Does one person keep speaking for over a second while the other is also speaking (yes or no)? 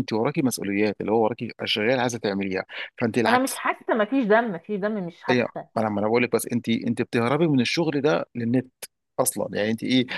no